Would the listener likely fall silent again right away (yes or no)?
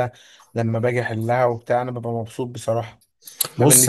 no